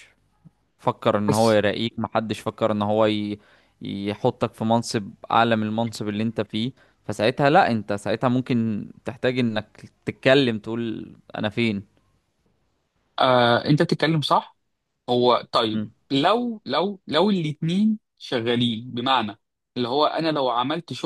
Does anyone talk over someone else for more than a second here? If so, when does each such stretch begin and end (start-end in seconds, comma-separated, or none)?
none